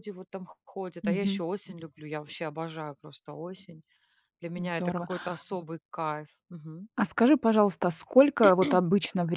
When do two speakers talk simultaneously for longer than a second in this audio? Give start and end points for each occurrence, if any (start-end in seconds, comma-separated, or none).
none